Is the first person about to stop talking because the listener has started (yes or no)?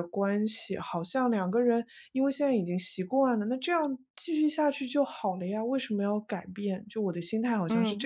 yes